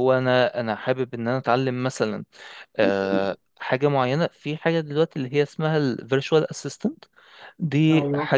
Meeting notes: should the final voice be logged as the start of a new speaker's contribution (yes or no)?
no